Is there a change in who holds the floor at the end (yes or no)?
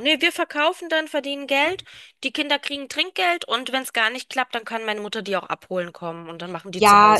yes